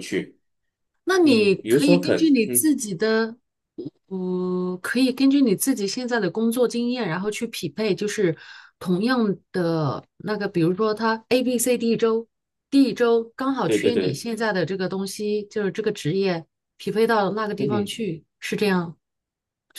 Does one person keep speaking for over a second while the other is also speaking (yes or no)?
yes